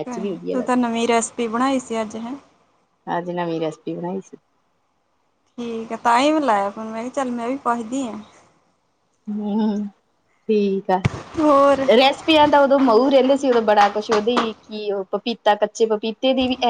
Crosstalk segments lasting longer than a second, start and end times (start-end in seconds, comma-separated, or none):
none